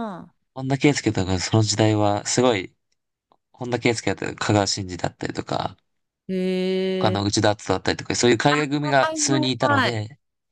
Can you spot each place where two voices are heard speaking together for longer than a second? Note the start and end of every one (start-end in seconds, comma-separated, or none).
8.8-10.0